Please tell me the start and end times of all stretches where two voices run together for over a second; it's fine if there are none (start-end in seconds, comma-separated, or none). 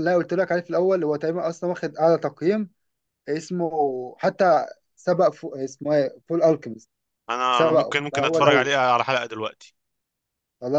7.5-8.7